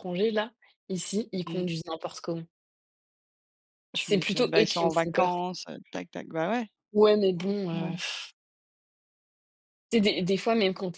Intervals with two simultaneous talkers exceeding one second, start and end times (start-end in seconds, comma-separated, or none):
3.9-5.4